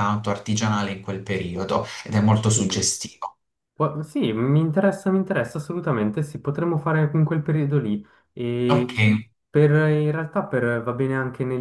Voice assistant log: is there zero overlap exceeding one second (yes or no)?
yes